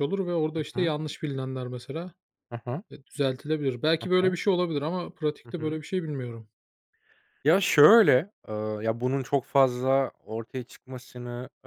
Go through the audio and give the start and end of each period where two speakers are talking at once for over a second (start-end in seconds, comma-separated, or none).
none